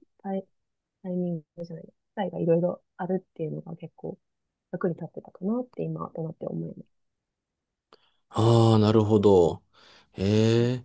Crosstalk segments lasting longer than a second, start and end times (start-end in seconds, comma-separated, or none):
none